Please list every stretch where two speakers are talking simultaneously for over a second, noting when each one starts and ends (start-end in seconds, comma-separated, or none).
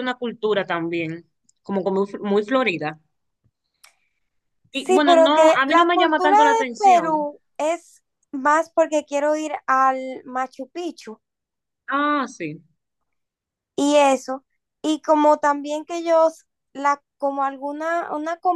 4.7-7.3